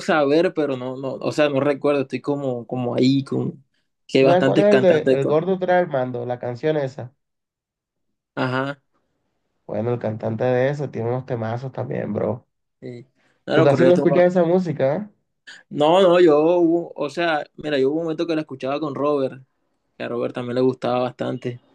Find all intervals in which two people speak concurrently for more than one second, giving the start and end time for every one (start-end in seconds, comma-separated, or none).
4.2-5.4